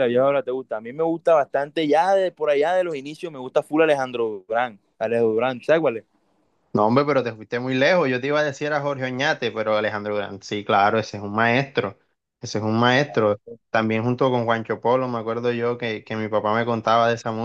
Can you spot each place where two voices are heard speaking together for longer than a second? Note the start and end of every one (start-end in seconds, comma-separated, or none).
none